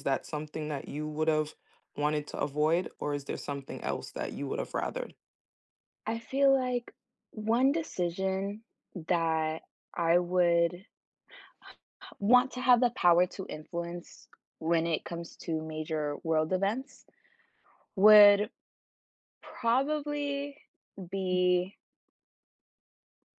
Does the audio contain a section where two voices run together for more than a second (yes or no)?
no